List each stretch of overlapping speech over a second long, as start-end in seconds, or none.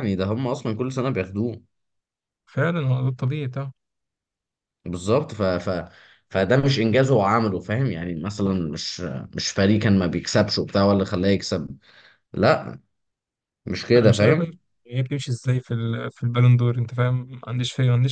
none